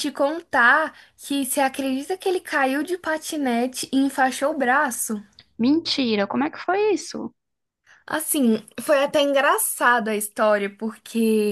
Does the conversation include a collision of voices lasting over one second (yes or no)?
no